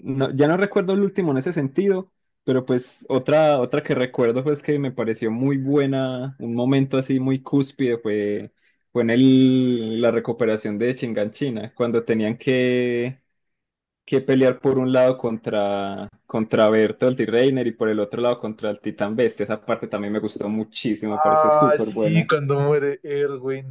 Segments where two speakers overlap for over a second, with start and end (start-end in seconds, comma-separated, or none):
21.1-22.3